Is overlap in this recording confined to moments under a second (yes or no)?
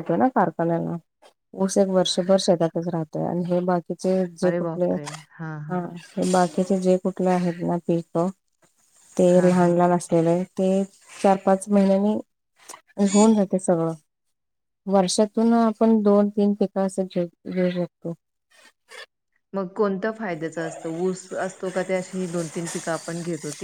yes